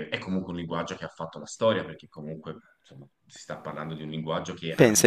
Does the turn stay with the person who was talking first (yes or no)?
no